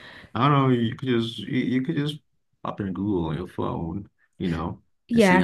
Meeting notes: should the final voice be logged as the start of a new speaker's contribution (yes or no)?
yes